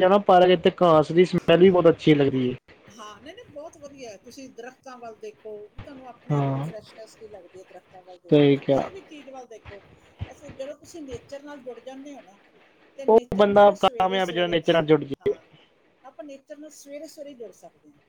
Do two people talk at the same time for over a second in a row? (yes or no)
yes